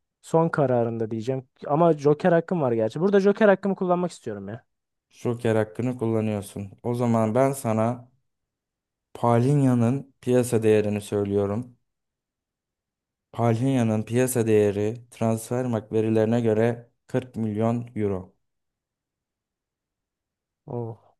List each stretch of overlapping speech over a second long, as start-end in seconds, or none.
none